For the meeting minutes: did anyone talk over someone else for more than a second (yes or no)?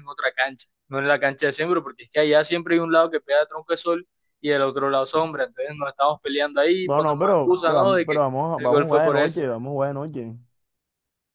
yes